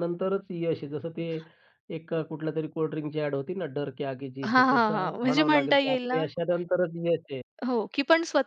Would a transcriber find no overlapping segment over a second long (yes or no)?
no